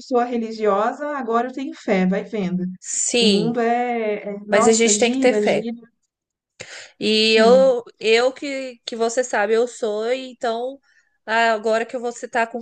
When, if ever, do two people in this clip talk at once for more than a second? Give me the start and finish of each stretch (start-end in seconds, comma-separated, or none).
4.5-5.7